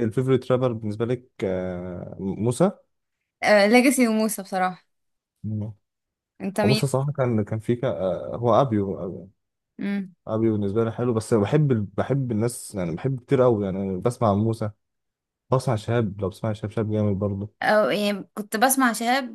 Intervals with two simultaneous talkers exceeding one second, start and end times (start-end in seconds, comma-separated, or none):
none